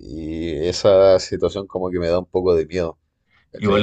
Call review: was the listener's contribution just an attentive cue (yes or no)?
no